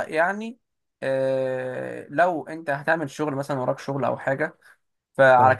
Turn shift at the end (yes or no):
no